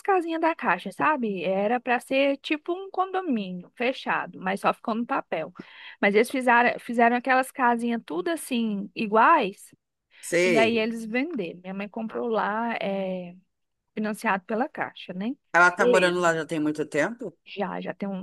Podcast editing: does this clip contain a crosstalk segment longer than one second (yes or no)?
no